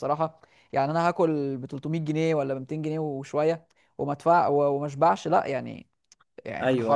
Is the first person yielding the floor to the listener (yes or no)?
yes